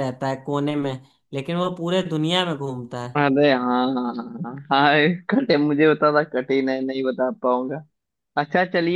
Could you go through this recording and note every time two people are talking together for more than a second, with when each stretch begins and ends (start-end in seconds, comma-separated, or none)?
none